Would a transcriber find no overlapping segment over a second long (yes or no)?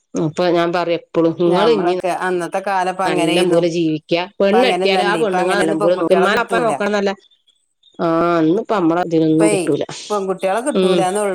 no